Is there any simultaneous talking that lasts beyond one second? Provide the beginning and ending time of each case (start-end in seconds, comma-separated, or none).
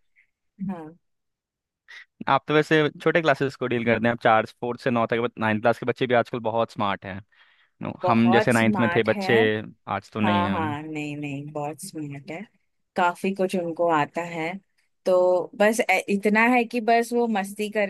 8.0-9.3